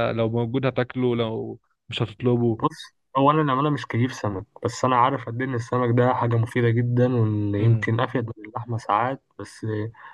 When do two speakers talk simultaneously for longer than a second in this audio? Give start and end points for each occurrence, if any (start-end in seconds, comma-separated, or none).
none